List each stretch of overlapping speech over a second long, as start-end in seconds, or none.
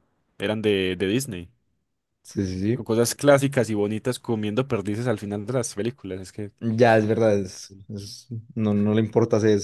none